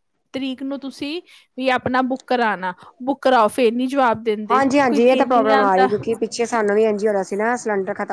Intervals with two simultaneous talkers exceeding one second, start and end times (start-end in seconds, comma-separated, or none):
none